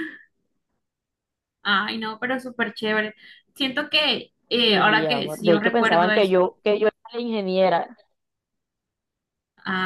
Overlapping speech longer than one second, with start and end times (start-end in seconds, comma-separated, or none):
4.6-6.4